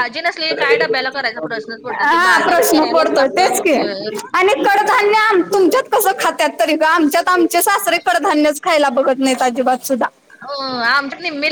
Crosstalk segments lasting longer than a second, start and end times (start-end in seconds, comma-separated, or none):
2.0-3.7